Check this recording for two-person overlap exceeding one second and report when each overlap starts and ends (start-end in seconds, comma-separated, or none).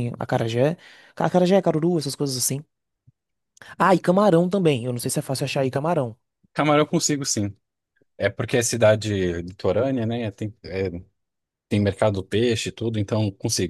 none